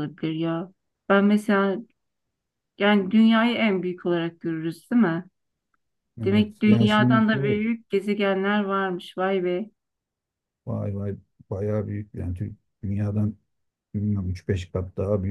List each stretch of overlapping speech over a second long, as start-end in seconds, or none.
6.2-7.6